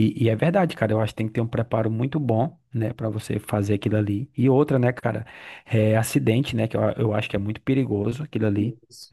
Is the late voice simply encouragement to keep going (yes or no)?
yes